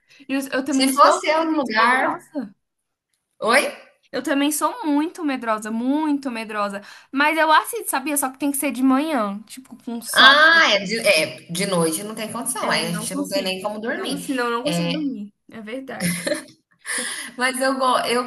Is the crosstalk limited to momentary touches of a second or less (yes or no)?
no